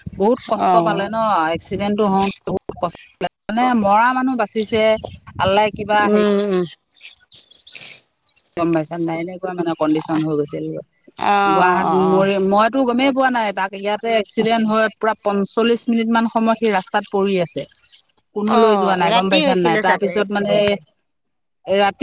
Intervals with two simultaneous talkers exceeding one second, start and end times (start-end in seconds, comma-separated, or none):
18.6-20.5